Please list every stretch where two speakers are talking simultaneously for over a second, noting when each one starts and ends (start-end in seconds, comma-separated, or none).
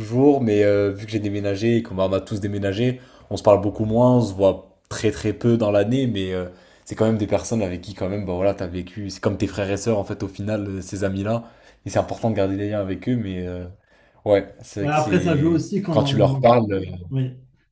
14.8-16.5